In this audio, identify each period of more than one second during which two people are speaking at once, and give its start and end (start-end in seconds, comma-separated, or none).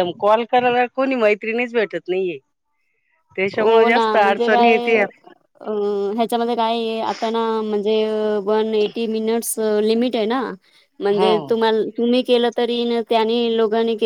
3.6-4.9